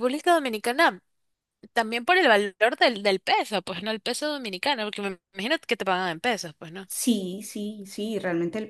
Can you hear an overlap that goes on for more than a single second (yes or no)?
no